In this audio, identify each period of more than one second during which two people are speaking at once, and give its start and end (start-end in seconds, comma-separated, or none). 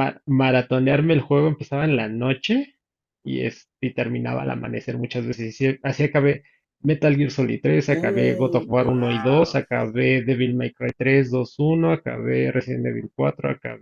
7.9-9.6